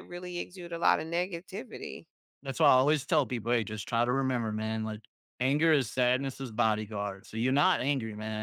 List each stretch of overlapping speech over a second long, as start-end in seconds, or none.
none